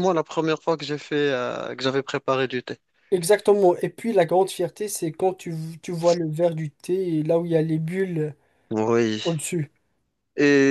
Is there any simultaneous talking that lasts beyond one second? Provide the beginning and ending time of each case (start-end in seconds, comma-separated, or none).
none